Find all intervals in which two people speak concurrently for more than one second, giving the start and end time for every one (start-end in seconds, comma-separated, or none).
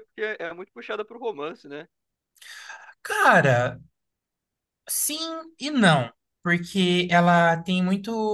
none